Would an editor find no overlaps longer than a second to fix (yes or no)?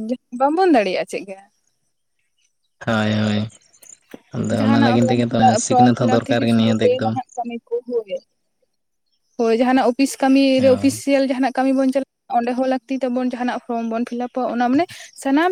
no